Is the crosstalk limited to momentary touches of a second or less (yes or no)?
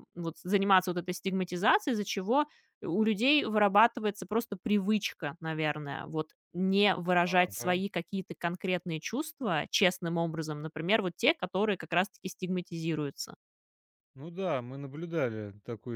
yes